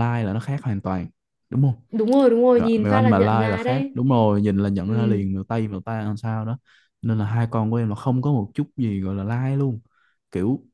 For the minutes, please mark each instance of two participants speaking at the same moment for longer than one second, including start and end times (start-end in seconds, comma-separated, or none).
2.6-4.0